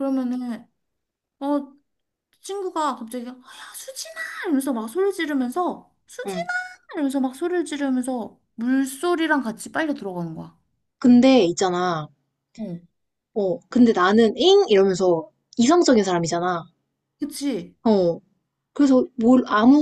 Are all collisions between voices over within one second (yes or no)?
yes